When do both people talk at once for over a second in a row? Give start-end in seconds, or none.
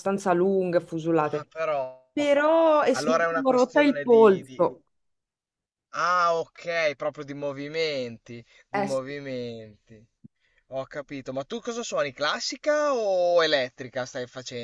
2.9-4.7